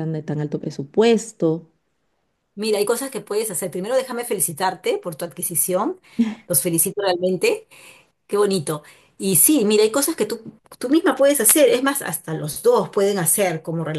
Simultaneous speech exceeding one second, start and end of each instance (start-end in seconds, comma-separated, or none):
none